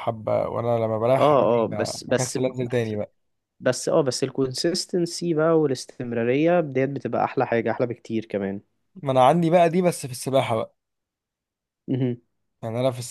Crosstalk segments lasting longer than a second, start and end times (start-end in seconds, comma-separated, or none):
1.2-2.9